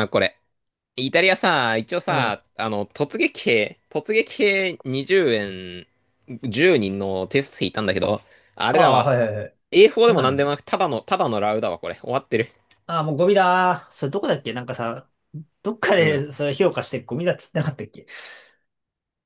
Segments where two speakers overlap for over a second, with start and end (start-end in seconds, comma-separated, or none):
none